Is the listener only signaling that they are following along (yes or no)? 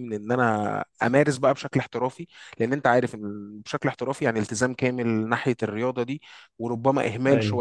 yes